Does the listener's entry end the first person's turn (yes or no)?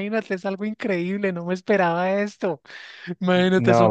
no